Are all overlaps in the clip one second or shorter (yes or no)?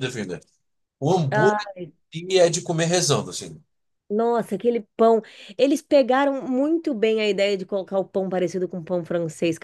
yes